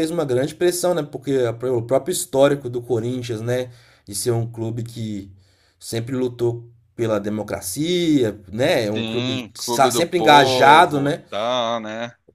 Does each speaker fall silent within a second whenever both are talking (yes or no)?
no